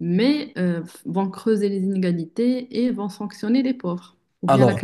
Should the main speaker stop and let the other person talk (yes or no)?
yes